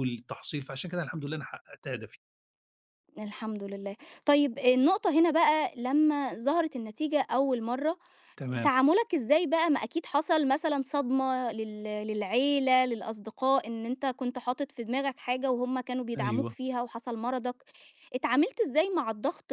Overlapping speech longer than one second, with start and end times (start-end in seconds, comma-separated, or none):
none